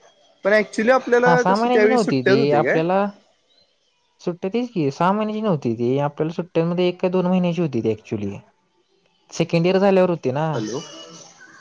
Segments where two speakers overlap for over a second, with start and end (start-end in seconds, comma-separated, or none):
1.2-2.8